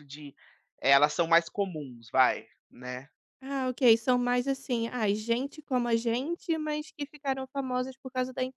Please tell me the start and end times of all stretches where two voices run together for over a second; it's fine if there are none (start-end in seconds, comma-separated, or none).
none